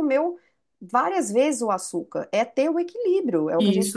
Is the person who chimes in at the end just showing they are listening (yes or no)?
no